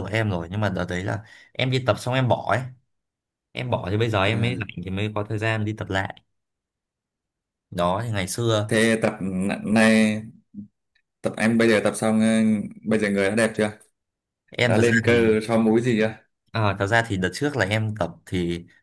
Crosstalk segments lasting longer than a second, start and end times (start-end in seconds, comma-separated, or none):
none